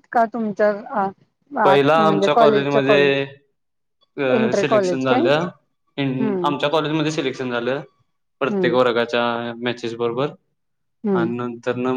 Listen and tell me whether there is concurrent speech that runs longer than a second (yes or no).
yes